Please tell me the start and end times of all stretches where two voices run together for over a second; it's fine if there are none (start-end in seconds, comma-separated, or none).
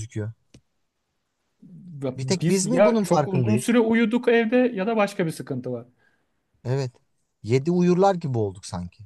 2.2-3.8